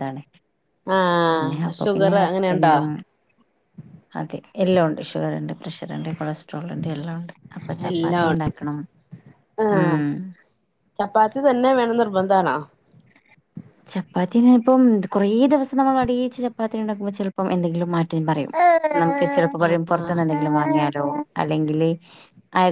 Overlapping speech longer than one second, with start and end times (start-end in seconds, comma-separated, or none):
1.3-2.7